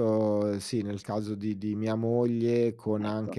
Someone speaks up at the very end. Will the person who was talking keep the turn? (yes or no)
yes